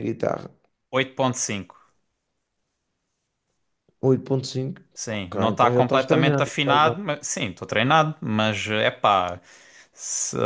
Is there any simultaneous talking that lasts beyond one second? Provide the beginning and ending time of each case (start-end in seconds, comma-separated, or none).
4.9-6.9